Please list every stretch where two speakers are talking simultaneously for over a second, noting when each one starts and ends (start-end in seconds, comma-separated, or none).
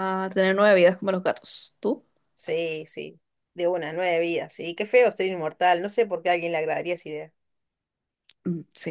none